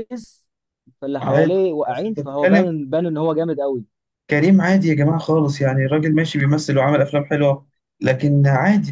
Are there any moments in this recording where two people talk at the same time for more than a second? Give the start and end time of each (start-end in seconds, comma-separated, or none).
1.2-2.7